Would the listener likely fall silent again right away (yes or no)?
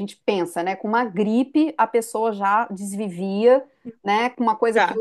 yes